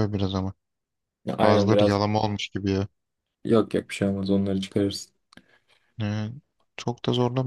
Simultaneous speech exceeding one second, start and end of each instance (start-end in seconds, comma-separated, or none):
none